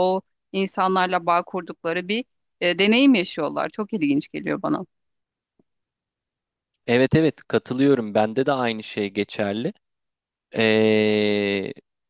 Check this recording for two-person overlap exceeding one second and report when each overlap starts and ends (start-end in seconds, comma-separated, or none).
none